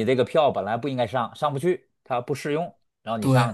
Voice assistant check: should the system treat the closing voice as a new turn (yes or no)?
yes